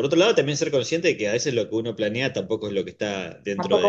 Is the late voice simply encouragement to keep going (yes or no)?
no